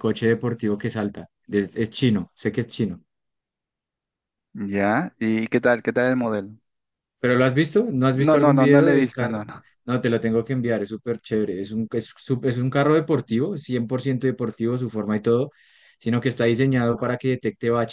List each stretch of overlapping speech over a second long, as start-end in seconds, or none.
8.1-9.4